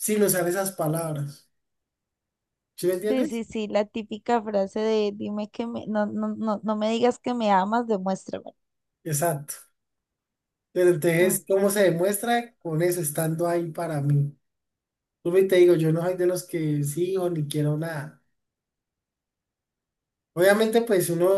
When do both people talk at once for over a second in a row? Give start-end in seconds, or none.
none